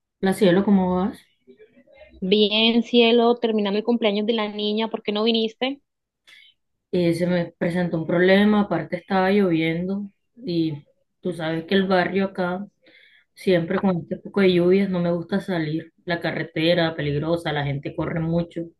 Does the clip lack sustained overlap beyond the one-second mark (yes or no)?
yes